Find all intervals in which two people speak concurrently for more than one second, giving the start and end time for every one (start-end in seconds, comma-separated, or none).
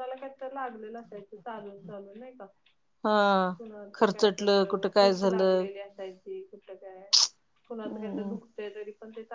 4.0-5.6